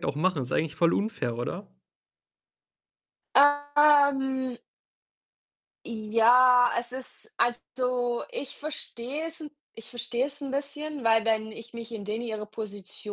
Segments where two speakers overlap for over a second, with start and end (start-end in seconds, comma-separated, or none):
none